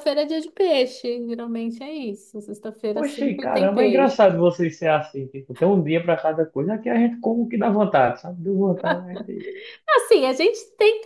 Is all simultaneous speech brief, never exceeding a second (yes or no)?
no